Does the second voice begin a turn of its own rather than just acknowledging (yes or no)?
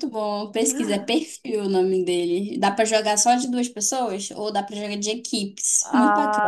yes